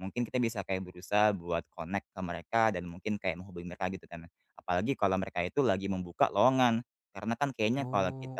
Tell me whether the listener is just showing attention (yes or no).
yes